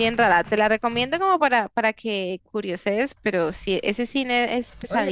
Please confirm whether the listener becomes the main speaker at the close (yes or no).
yes